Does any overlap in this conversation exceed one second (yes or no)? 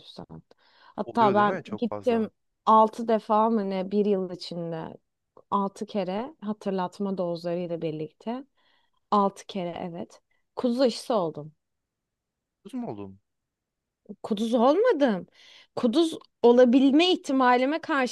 yes